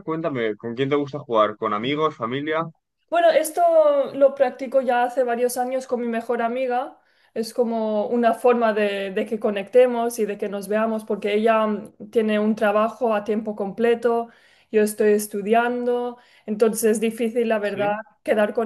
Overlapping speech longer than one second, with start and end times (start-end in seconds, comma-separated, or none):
none